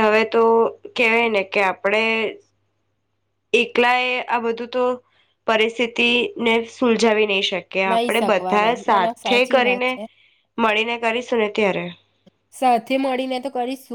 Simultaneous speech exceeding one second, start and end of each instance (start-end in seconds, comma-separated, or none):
7.9-9.9